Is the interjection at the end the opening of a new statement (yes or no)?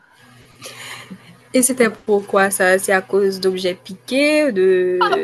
yes